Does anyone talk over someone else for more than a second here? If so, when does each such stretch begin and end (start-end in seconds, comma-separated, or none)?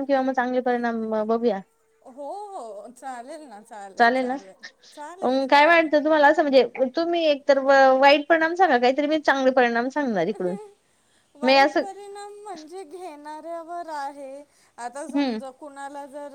none